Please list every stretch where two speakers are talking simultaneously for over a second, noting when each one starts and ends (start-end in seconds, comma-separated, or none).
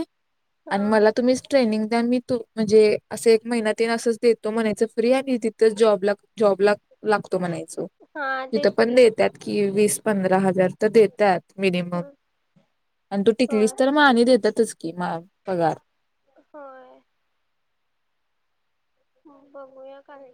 none